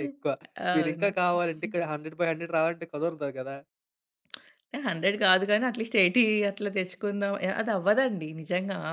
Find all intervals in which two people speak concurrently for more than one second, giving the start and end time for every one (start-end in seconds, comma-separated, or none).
none